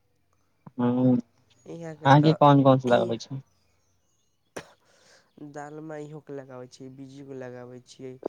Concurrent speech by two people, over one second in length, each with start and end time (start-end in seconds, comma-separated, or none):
1.7-3.1